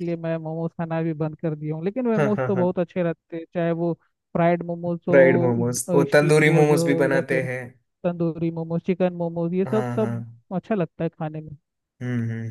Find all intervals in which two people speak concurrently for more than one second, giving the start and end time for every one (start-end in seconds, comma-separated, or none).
4.9-7.5